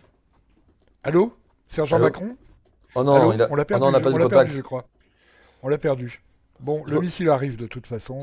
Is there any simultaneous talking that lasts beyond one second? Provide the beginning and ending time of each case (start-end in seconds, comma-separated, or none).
3.1-4.6